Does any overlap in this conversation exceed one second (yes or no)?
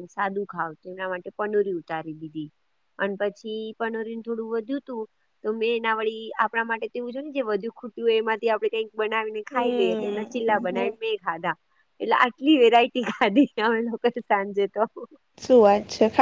yes